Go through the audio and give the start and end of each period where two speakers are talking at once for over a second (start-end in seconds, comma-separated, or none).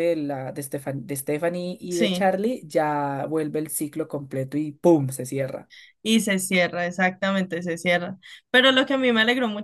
none